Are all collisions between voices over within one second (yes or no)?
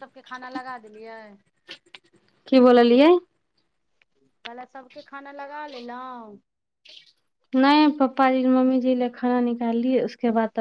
yes